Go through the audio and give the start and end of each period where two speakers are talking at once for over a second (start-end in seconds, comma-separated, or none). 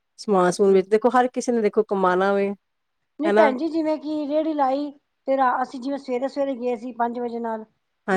none